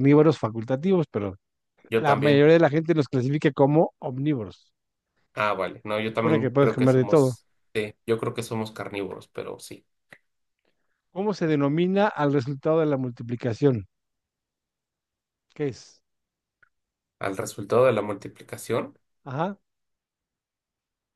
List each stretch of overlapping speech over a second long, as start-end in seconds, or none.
5.9-7.4